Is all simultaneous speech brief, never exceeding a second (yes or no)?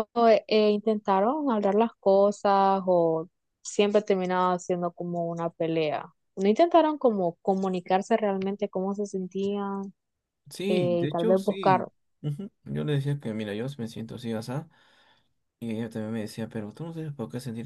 no